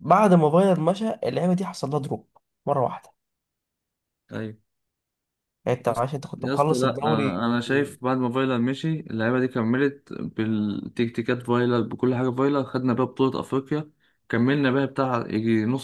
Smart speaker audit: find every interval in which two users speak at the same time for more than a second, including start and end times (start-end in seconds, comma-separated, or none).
5.9-7.3